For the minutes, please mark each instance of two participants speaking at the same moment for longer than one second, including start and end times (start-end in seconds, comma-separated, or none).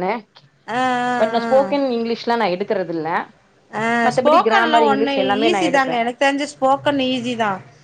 4.1-6.0